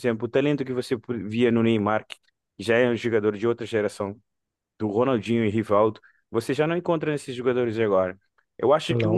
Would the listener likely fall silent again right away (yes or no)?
yes